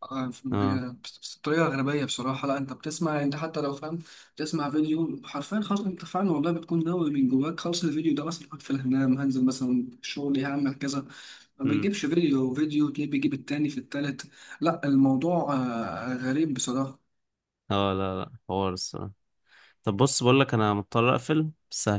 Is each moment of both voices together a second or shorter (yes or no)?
yes